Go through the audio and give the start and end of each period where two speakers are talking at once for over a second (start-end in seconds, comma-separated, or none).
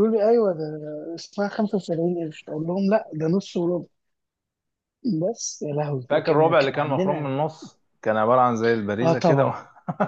6.1-7.4